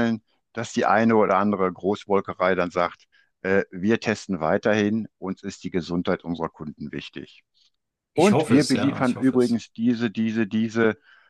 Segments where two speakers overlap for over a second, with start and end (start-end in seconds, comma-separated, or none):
8.1-9.6